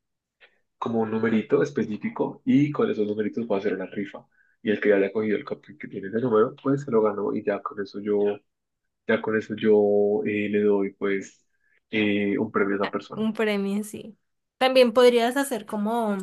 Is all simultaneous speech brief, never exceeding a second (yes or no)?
yes